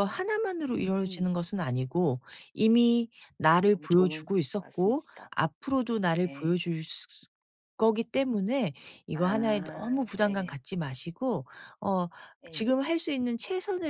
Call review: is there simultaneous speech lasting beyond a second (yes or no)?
yes